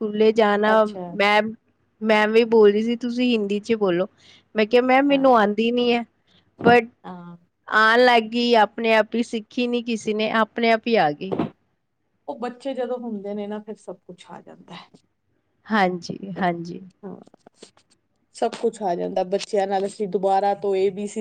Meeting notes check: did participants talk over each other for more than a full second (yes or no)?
no